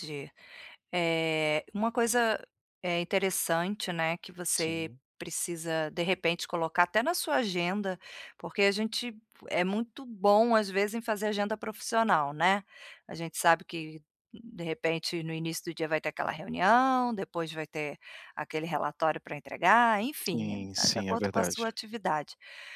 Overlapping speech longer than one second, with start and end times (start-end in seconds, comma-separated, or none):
20.3-21.7